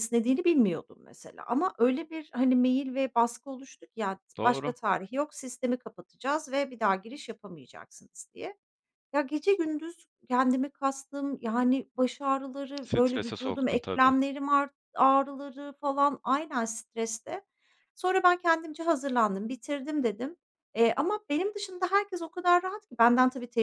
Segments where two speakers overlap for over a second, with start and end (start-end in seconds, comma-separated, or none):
12.8-14.1